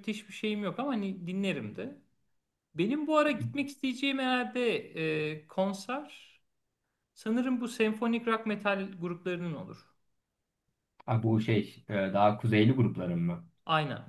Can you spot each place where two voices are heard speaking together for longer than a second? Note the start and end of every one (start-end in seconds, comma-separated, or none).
none